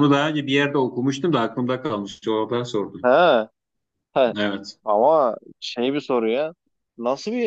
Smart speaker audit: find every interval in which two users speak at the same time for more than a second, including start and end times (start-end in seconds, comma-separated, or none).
none